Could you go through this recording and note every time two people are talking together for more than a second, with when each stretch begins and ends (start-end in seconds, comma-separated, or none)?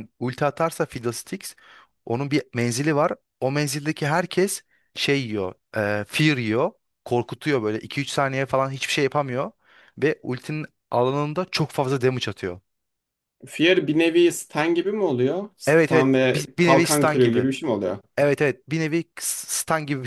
15.7-17.5